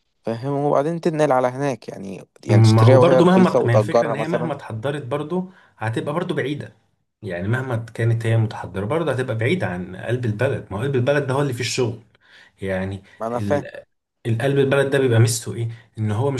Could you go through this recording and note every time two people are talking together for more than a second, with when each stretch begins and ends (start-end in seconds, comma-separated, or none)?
2.5-4.5